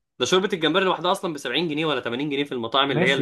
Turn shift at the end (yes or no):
yes